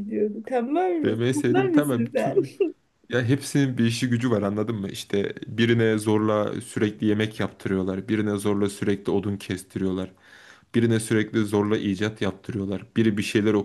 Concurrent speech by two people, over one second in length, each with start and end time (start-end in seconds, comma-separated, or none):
1.0-2.3